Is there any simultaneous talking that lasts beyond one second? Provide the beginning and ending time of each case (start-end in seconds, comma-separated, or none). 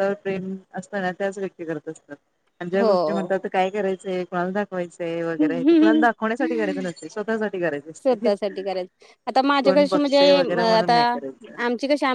9.6-10.9